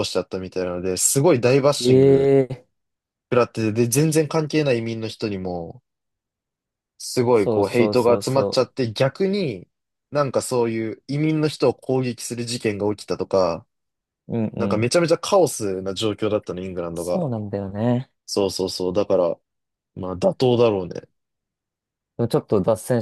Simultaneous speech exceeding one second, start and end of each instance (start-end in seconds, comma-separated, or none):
7.3-8.7